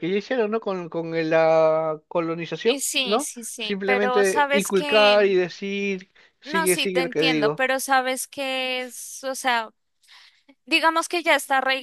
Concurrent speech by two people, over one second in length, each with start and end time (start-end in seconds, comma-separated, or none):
2.6-5.4, 6.4-7.6